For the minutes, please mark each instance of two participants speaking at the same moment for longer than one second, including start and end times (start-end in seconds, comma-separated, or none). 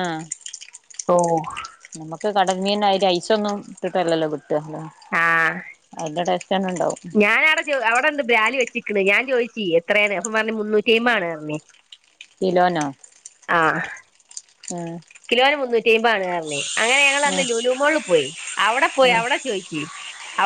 none